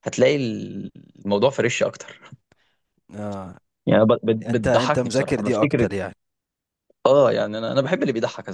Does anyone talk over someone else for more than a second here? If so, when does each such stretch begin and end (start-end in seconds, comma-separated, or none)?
4.5-5.8